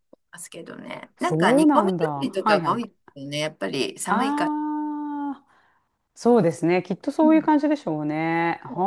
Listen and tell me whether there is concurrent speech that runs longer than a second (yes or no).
yes